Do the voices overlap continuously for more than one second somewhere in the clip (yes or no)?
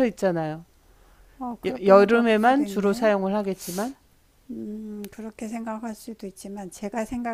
yes